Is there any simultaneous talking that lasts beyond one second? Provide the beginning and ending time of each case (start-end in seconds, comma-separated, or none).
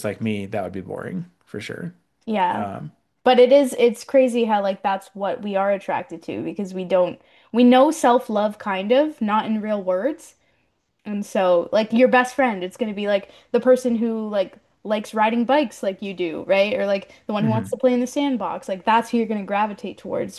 none